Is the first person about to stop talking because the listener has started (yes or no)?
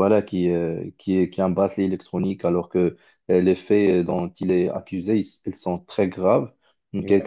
no